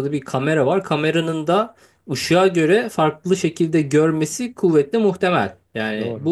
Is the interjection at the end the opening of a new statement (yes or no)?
no